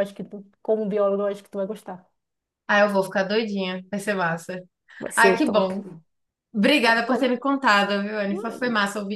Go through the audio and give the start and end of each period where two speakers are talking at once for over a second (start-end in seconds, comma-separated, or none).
none